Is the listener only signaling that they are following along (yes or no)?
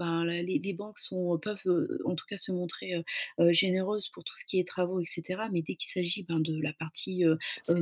yes